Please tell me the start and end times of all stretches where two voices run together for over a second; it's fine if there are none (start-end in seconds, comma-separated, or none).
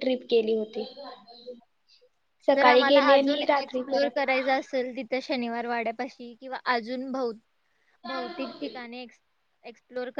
2.5-4.4